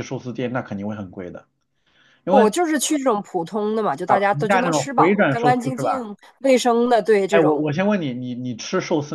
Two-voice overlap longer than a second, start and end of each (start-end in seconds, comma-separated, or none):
4.0-6.1